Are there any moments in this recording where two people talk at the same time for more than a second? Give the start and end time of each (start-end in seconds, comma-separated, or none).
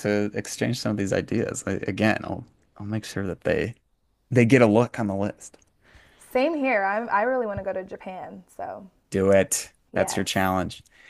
none